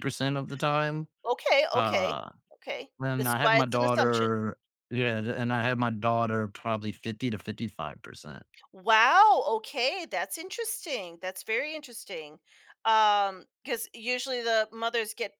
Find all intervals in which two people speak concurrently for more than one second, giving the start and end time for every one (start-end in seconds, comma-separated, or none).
3.0-4.3